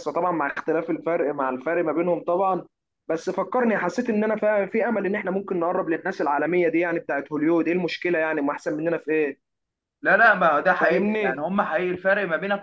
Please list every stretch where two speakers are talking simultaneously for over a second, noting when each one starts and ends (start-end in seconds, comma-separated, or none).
none